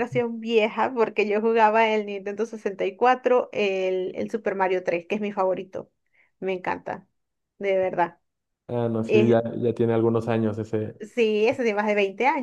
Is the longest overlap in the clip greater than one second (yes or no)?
no